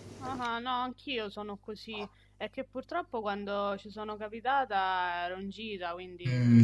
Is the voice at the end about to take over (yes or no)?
yes